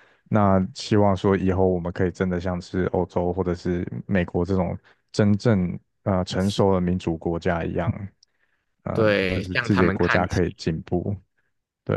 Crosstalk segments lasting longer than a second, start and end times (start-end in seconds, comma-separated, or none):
8.9-10.4